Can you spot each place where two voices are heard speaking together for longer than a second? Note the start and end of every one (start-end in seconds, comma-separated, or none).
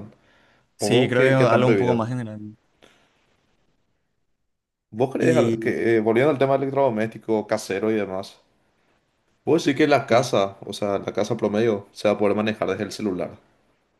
0.8-2.0